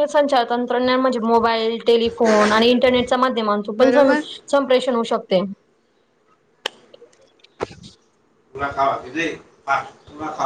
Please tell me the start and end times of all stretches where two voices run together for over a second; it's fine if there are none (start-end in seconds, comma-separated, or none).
none